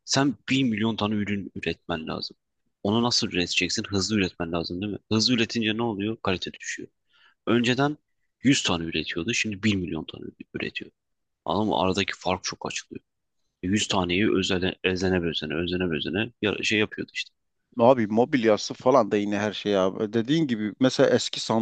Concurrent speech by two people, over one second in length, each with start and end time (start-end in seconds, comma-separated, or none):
none